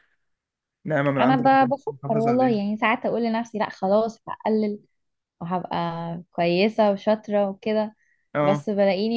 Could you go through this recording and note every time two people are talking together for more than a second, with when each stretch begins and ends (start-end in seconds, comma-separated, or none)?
1.2-2.6